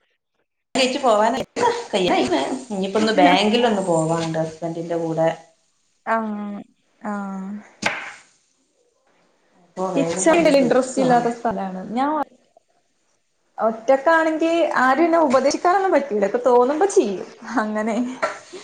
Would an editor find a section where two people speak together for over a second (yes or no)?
yes